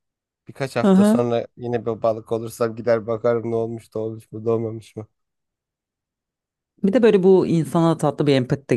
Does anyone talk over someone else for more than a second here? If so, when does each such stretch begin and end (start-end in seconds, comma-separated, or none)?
none